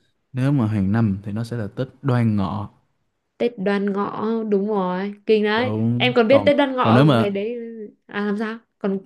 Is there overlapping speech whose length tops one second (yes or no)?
yes